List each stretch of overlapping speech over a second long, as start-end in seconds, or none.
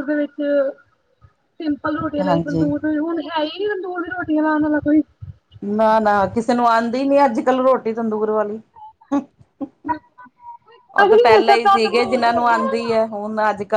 11.1-13.1